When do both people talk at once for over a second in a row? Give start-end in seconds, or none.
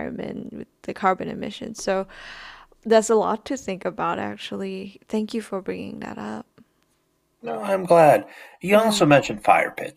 none